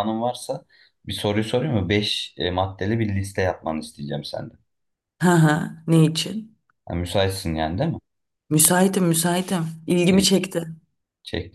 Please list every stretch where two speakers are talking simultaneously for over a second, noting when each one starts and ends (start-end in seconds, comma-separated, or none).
none